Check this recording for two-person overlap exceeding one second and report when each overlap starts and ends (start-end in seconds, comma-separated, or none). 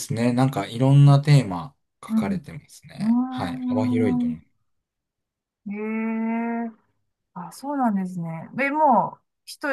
3.0-4.4